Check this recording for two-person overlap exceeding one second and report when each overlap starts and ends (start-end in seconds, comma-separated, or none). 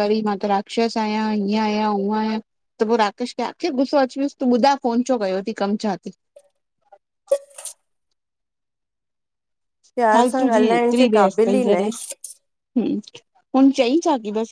10.1-11.9